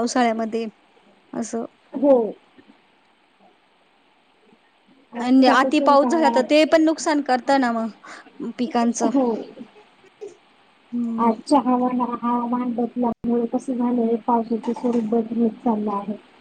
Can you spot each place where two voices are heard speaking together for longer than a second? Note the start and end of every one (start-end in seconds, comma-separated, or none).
5.2-6.6